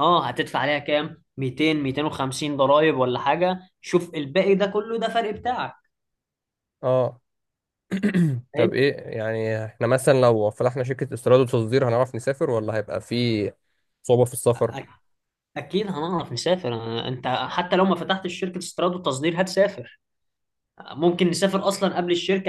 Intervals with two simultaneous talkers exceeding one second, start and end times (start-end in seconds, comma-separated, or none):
none